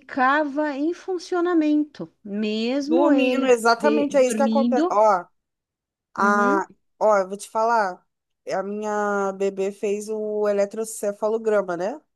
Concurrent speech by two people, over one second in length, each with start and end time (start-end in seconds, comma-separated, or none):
2.8-5.0